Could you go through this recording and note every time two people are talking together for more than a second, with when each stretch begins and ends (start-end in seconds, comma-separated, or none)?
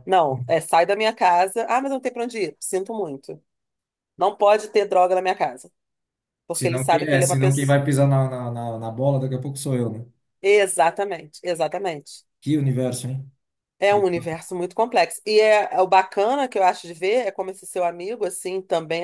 6.5-7.8